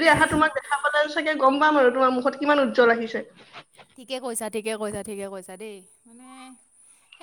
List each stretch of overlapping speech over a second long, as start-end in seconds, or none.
none